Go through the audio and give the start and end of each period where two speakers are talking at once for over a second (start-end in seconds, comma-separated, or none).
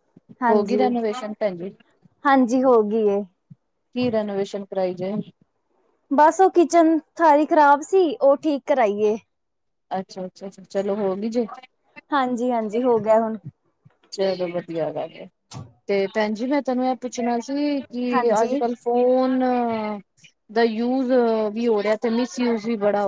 none